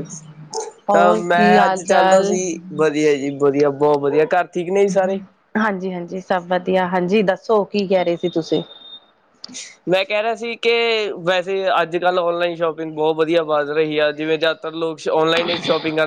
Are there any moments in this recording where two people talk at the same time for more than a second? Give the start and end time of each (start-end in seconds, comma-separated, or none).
0.9-2.3